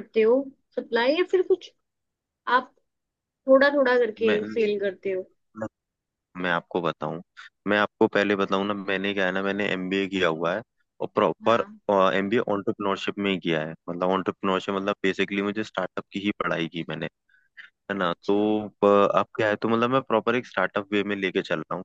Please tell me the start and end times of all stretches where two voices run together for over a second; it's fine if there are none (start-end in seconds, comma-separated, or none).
none